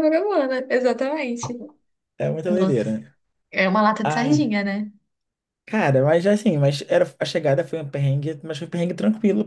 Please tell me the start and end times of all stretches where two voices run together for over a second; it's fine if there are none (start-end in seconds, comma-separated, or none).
none